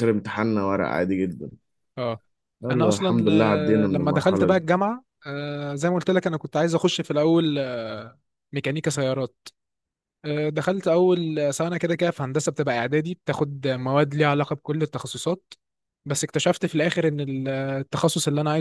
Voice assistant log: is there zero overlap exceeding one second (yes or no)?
no